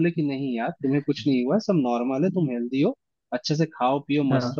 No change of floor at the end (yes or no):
yes